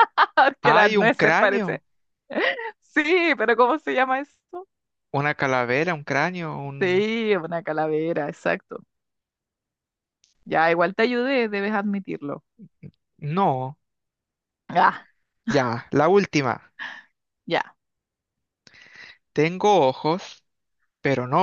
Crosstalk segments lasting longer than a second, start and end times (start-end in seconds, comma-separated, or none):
0.6-1.8